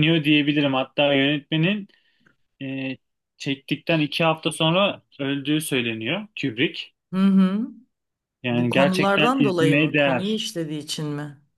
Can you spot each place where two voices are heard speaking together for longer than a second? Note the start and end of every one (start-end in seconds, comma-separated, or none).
8.5-10.5